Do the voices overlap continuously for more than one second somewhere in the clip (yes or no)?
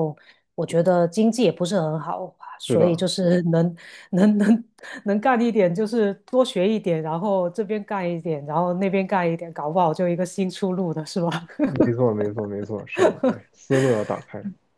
no